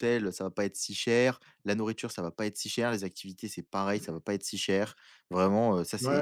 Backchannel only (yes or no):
no